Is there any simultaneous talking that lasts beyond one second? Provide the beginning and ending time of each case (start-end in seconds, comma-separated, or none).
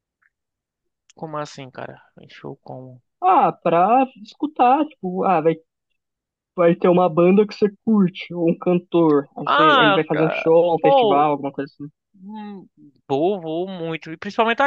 9.4-11.3